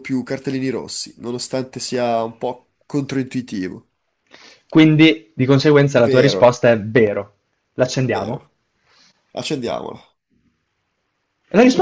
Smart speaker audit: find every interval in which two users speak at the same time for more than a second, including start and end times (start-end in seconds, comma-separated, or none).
none